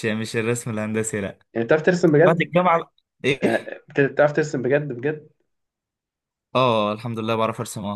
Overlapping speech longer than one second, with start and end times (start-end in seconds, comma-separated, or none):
none